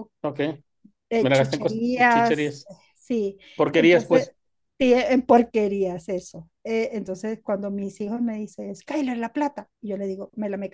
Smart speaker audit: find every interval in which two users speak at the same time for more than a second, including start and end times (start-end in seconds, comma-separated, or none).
1.2-2.7